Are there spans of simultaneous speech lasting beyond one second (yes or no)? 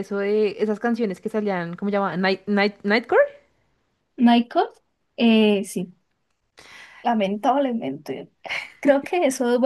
no